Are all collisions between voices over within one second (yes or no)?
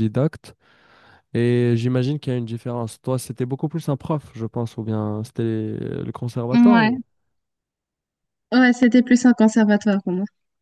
yes